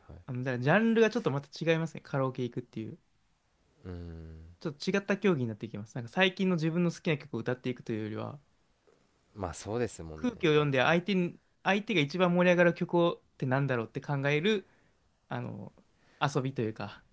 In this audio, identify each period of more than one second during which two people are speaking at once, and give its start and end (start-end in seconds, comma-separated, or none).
none